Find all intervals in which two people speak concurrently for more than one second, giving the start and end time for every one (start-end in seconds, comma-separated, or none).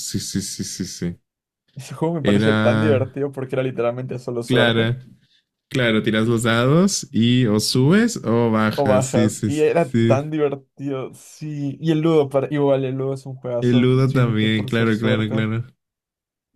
8.7-10.2, 13.6-15.5